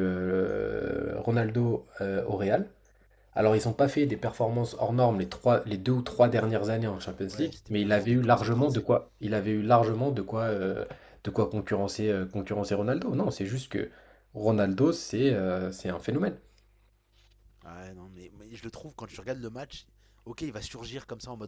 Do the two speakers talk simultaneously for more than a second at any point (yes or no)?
yes